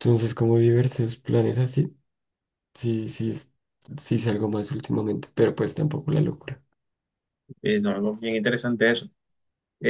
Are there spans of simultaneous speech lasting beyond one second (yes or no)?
no